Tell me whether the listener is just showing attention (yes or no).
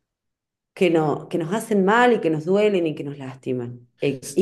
yes